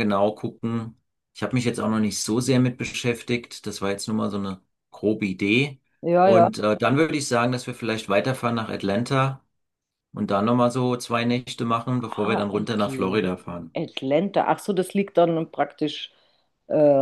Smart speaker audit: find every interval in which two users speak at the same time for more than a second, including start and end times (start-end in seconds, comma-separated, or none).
12.0-13.8